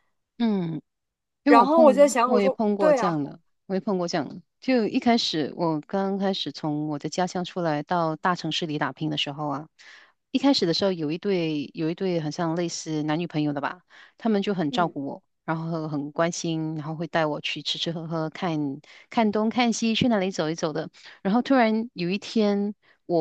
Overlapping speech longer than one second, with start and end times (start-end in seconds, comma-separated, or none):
1.4-3.2